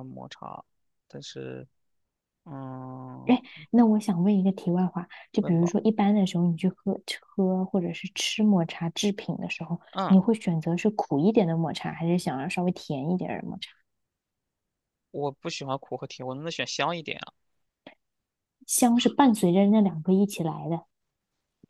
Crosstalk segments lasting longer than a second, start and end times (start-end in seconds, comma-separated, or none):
none